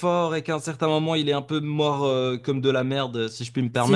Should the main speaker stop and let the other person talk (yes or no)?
yes